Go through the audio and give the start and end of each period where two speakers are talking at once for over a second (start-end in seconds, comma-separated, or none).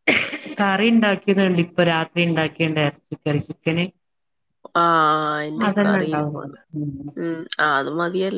none